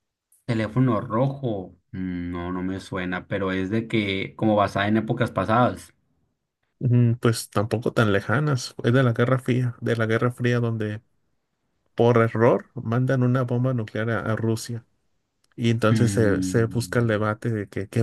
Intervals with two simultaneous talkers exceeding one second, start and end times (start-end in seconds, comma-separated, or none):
15.9-17.2